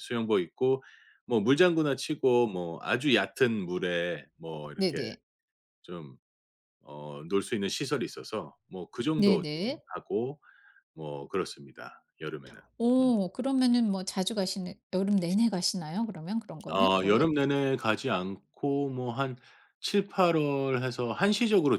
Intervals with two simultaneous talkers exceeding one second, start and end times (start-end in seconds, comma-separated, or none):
none